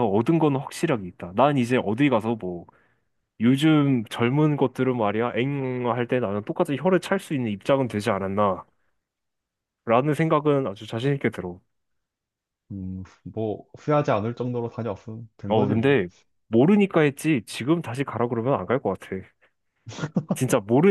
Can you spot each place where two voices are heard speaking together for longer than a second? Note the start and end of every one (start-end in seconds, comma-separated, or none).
none